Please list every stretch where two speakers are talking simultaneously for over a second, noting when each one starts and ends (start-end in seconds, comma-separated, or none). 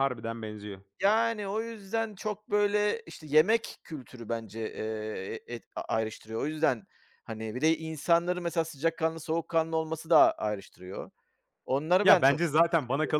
none